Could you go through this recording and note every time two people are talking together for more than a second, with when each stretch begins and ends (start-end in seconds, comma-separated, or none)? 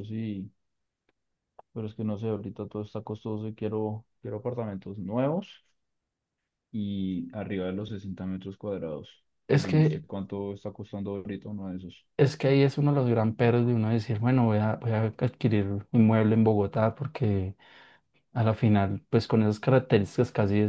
none